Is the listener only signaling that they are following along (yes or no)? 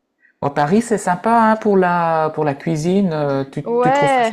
yes